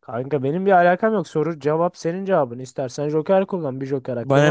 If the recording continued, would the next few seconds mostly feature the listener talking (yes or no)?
yes